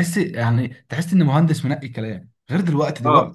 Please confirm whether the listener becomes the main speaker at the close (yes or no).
no